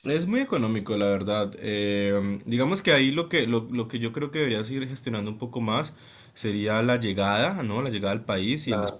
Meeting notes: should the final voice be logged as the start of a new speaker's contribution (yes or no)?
no